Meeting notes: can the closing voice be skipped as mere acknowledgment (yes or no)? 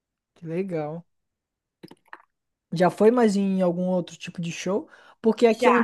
yes